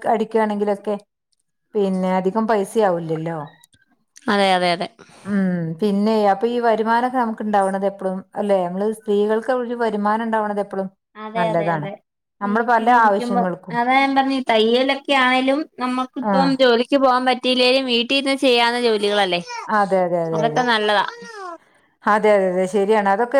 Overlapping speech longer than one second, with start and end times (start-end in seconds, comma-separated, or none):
none